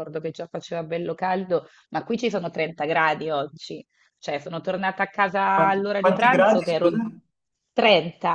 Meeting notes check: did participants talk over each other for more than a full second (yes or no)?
yes